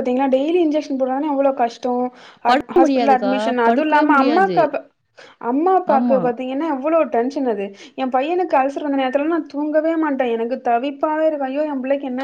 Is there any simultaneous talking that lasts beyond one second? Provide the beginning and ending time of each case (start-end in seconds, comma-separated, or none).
2.5-4.6